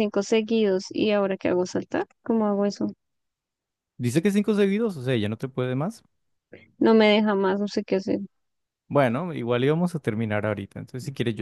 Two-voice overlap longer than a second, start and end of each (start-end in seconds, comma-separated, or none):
none